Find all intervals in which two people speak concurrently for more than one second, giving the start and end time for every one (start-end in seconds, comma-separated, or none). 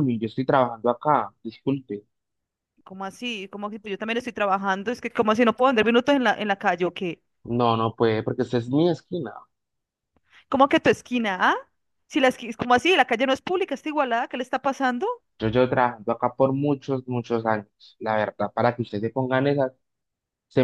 none